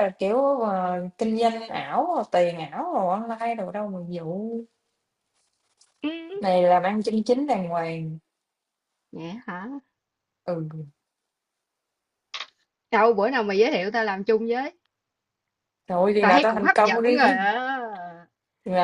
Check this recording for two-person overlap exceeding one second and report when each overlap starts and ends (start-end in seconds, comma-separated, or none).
16.2-17.5